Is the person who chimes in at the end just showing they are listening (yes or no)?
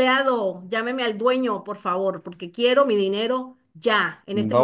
no